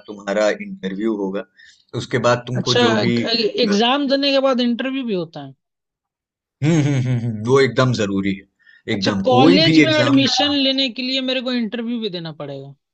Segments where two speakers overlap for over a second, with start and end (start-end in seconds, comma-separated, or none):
8.9-10.5